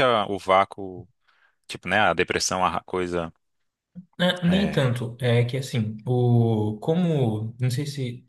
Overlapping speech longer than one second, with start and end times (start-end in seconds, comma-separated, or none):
none